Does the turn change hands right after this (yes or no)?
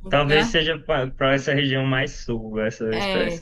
yes